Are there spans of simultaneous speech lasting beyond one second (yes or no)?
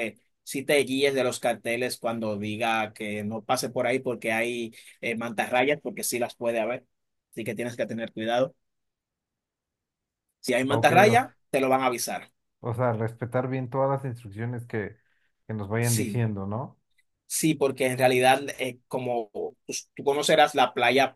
no